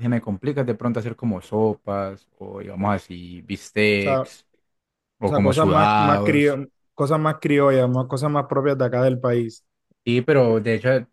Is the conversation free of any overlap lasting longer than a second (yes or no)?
no